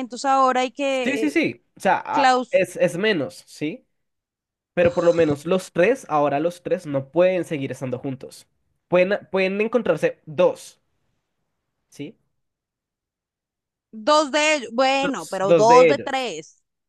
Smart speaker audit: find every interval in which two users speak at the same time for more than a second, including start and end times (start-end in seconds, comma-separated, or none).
15.0-16.3